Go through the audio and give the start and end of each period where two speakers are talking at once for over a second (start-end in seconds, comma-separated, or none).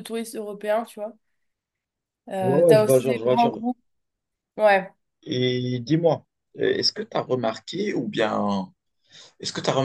2.4-3.6